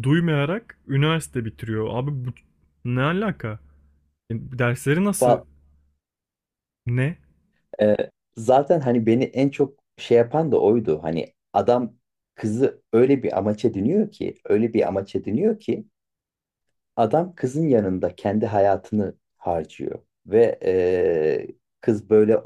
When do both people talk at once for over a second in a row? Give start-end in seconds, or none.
none